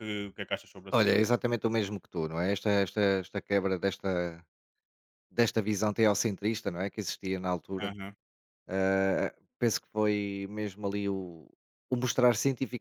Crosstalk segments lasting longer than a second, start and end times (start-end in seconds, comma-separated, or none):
none